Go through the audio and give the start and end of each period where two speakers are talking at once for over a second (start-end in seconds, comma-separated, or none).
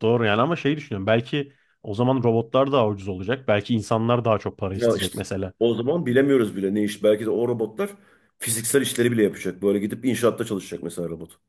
none